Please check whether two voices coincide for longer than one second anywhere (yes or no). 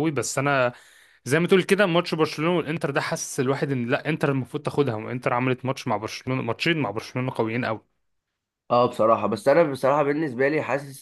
no